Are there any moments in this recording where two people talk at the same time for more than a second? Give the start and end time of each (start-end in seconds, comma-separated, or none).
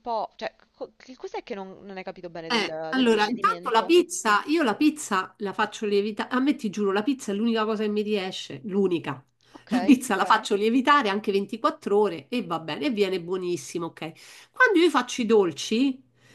2.5-3.9